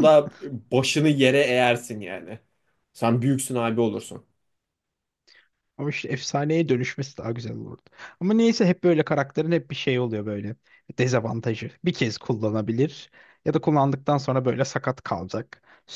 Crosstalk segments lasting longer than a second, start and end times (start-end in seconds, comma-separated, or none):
none